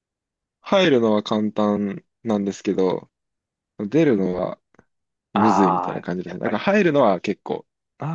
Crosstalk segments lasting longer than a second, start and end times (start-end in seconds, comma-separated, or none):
5.3-6.7